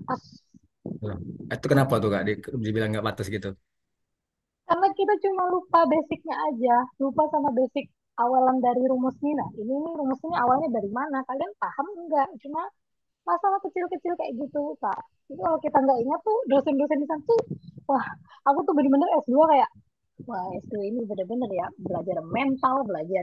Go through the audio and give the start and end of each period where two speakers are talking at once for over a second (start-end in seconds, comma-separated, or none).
none